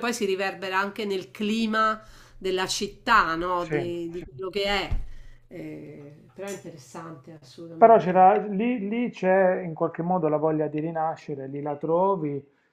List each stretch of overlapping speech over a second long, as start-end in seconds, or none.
none